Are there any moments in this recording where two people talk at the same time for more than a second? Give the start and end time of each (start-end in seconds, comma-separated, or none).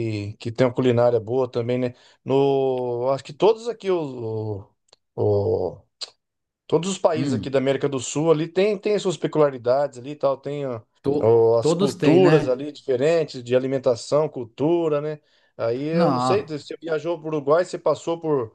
11.2-12.6